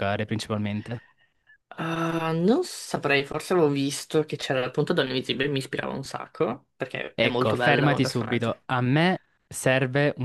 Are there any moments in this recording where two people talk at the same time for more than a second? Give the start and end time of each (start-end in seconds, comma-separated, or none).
7.1-8.5